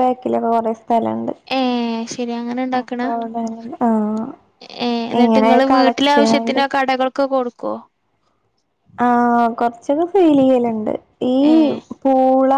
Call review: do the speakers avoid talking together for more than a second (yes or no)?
no